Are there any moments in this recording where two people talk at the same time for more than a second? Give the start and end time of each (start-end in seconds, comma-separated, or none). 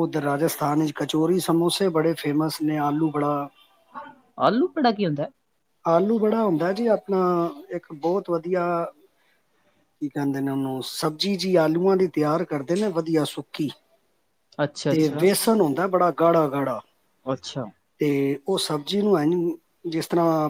none